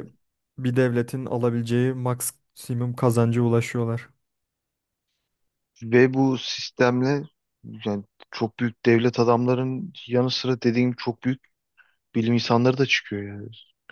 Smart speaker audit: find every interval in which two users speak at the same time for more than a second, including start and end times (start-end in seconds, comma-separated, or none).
none